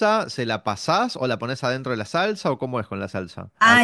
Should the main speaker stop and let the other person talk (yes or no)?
yes